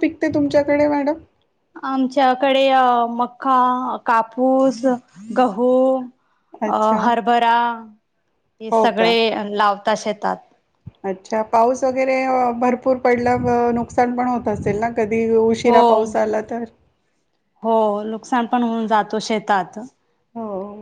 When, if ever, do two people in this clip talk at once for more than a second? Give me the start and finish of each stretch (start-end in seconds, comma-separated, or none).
none